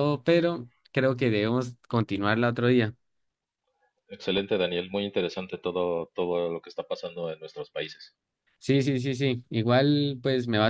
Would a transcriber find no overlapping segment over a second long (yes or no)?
yes